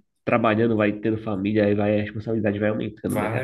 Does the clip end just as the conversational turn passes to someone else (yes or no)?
yes